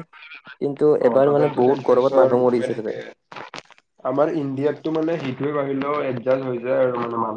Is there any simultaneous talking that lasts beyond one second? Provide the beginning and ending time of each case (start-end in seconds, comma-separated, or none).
1.0-3.0